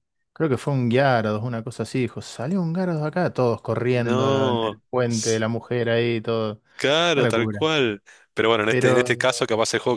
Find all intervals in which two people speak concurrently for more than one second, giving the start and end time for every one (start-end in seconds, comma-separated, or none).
3.9-5.4